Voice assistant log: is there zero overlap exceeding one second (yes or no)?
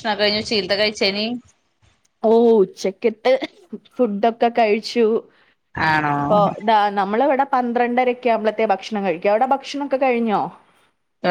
yes